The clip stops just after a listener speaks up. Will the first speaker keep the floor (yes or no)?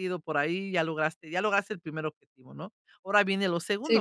no